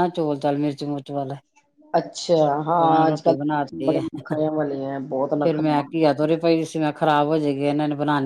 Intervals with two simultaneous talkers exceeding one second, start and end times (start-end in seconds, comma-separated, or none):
2.8-6.1